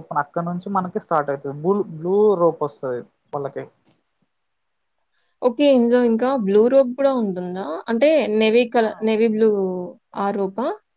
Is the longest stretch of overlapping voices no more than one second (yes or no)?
yes